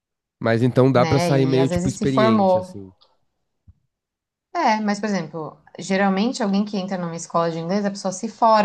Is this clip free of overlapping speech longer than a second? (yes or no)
no